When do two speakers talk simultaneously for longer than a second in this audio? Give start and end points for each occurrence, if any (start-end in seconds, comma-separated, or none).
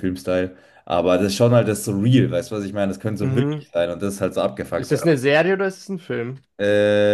none